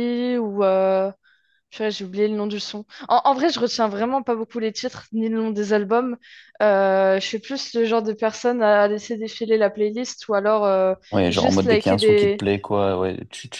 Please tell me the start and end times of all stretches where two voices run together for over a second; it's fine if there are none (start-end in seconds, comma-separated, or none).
11.1-12.4